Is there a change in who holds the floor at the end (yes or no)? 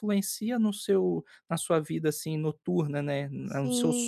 yes